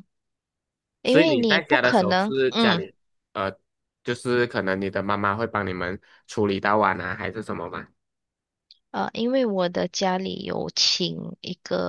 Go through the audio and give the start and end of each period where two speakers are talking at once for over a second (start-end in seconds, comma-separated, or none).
1.0-2.8